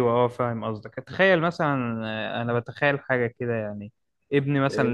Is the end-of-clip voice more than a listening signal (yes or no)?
no